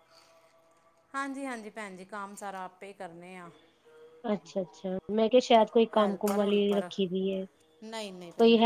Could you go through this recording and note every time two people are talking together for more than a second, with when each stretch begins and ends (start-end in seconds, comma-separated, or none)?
none